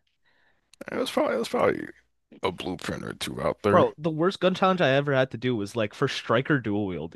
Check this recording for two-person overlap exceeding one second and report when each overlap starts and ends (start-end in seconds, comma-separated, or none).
none